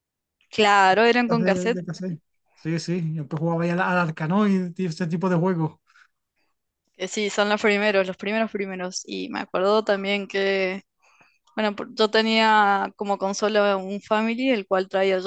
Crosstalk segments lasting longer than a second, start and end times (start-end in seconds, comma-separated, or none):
none